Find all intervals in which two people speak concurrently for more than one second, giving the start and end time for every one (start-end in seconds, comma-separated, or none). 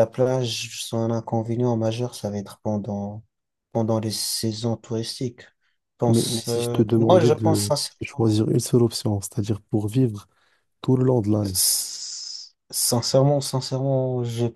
6.1-8.4